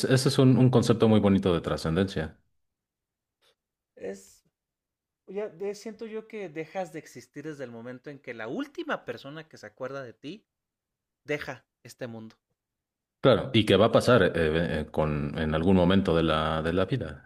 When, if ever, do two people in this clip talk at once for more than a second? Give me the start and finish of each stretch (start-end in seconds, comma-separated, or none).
none